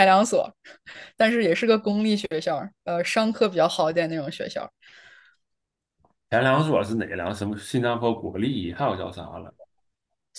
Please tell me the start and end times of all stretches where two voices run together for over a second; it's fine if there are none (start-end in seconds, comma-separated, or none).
none